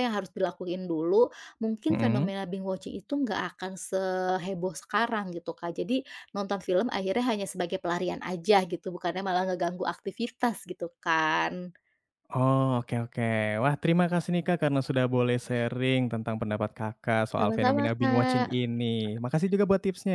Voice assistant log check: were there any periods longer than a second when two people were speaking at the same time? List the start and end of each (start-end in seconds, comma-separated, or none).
17.4-18.6